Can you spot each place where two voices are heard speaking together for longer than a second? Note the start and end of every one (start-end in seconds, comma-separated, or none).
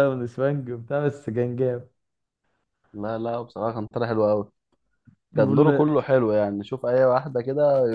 none